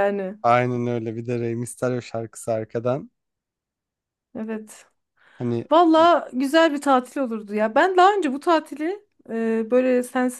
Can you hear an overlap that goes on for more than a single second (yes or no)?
no